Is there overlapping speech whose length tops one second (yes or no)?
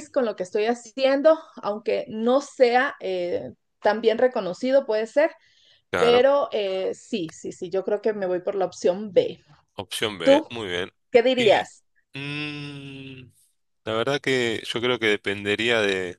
no